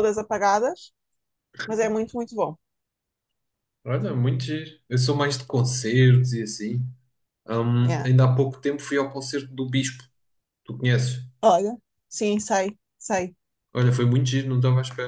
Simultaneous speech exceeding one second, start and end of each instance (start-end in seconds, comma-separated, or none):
none